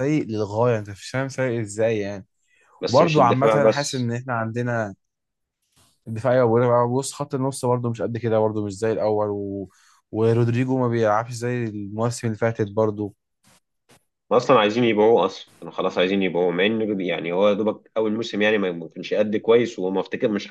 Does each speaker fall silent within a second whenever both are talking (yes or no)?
no